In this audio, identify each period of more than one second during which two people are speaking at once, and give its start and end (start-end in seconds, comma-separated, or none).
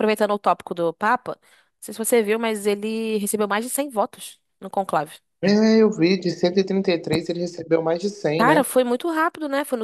none